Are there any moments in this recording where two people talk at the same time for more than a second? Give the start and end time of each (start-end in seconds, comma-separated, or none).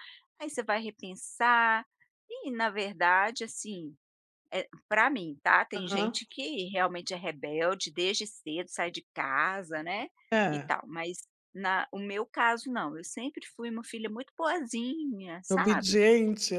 none